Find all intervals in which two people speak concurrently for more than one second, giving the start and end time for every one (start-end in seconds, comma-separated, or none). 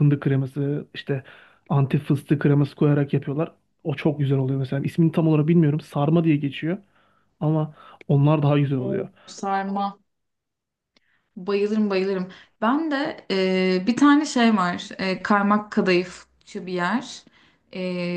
none